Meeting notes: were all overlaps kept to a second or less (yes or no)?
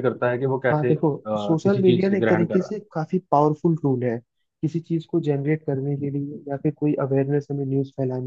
no